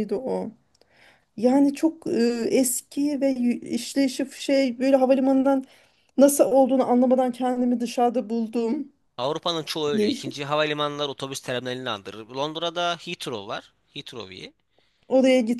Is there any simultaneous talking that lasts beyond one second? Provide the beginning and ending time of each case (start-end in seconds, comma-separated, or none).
none